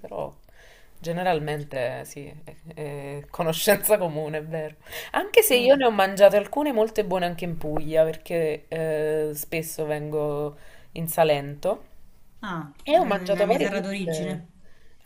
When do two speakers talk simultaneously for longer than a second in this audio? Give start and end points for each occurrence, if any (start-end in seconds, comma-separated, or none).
12.8-14.5